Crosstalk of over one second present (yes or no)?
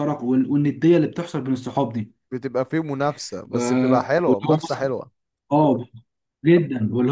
yes